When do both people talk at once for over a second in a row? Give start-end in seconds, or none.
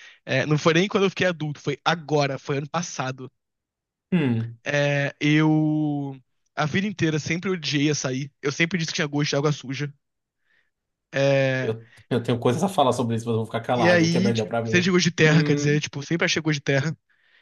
13.8-15.8